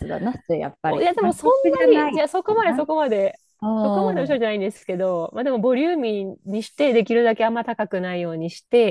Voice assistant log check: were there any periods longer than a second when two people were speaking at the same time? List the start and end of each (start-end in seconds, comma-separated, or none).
0.8-2.8